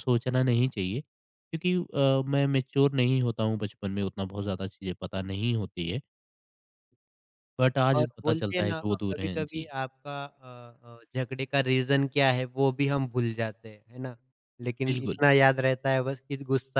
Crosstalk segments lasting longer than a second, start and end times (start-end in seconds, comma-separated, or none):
8.0-9.7